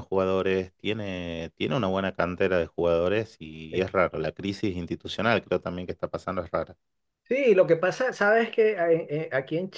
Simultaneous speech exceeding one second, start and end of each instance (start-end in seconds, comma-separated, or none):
none